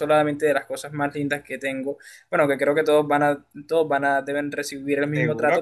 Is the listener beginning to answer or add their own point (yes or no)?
yes